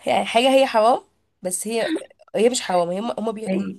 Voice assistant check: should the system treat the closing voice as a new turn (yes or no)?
no